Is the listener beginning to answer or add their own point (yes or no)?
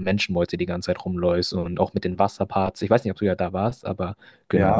yes